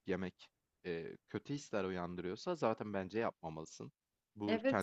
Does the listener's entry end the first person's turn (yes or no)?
no